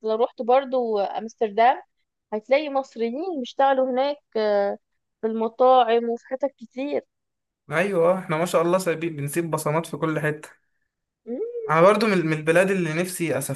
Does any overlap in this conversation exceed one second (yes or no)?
no